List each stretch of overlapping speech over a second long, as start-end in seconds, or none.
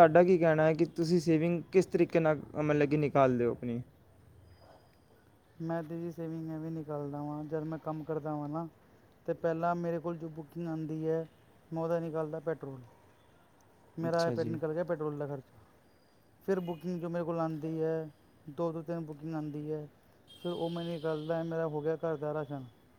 none